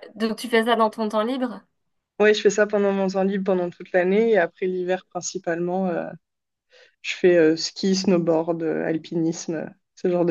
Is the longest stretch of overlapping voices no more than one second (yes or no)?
yes